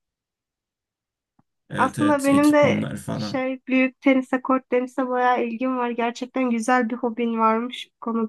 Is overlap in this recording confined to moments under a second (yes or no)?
no